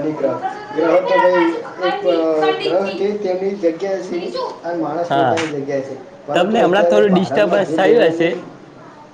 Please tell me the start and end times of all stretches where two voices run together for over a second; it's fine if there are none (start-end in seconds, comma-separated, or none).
6.3-8.3